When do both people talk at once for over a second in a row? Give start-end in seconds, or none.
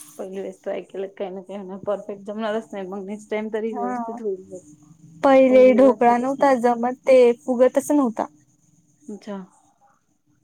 5.5-6.7